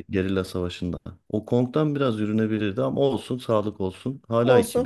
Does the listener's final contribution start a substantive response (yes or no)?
yes